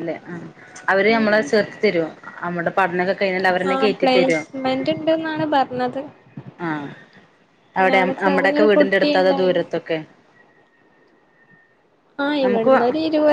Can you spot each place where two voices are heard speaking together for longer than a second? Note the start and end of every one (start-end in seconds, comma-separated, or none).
8.2-9.6